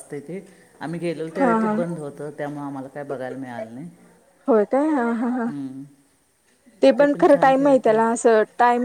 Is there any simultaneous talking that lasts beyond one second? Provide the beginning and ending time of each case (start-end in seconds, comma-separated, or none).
none